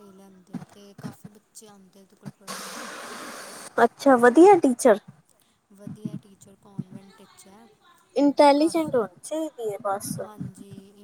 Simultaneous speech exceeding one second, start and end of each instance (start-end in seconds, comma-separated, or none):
none